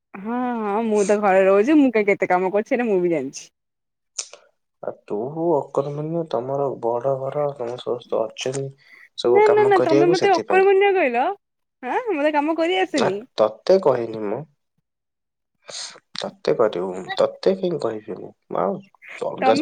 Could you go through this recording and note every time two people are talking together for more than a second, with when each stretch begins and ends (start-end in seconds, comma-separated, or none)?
none